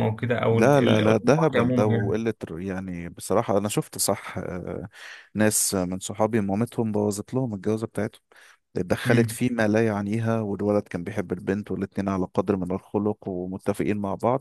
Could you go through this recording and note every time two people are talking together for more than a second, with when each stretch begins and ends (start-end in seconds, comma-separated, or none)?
0.5-2.2